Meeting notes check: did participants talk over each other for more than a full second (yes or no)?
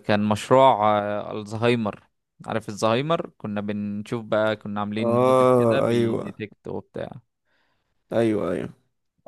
yes